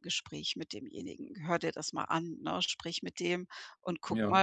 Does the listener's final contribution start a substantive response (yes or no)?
no